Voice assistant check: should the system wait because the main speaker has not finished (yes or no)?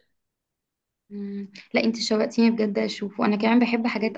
yes